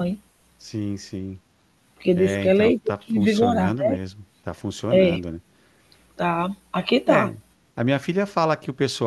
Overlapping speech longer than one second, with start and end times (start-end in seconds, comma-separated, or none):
2.1-4.0